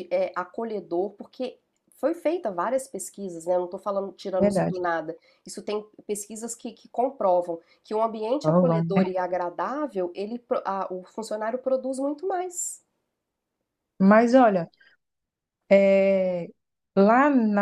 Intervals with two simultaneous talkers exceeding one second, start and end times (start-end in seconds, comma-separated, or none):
none